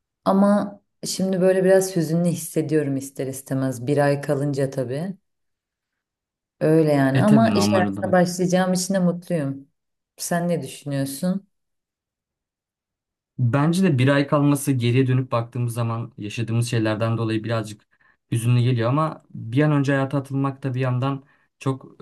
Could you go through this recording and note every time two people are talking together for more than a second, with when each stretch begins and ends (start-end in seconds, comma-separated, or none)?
7.1-8.4